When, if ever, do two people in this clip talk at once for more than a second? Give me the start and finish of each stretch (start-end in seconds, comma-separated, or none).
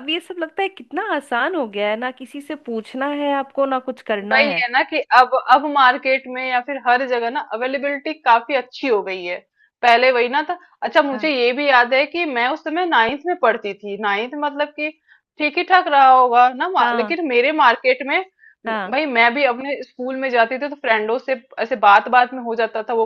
none